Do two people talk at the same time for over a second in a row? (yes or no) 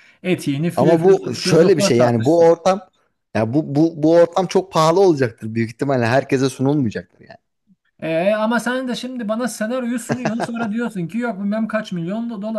yes